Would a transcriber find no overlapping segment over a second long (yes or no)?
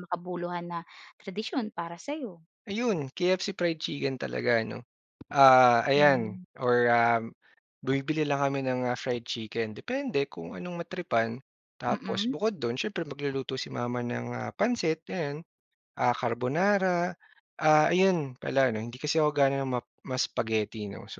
yes